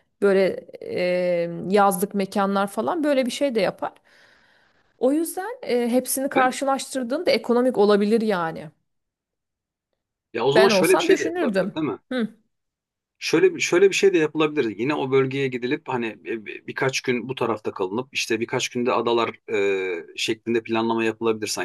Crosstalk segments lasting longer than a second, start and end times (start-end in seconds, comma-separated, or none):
10.6-12.0